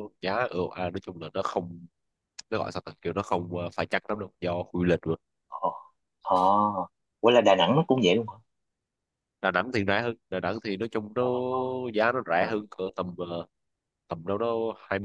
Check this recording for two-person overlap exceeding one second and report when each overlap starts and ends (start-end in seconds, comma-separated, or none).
none